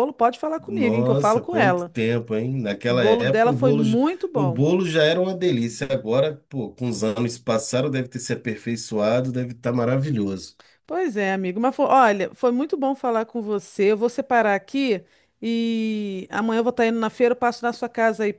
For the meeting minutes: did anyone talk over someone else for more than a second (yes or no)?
yes